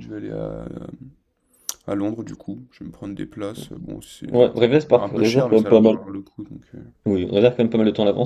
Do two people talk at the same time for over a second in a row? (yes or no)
yes